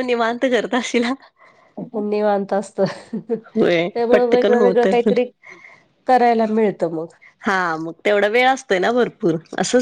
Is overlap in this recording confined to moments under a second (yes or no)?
no